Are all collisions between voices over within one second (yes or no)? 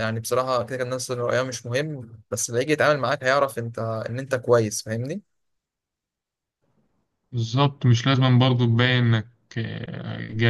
yes